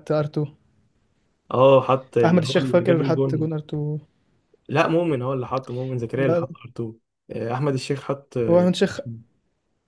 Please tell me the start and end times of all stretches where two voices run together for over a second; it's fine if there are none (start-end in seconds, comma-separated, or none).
2.2-3.5